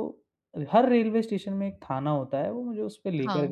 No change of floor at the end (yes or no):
yes